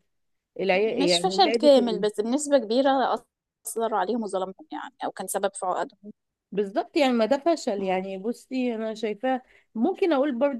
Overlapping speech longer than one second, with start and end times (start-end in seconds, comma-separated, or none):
0.7-2.1